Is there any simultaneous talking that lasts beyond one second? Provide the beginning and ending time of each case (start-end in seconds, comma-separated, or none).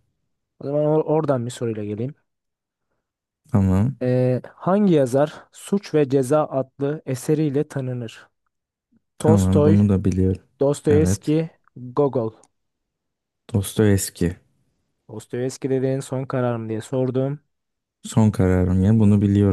none